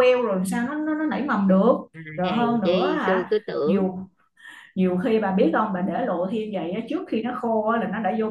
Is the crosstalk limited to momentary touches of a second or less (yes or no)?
no